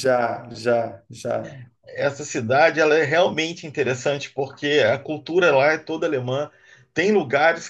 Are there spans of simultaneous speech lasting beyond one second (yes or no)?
no